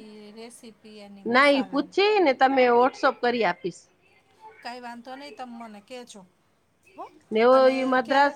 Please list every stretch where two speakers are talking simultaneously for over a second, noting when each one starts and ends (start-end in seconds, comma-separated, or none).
none